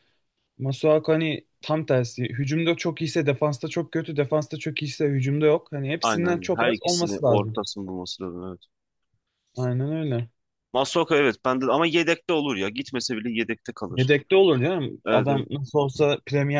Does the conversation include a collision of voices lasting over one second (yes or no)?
yes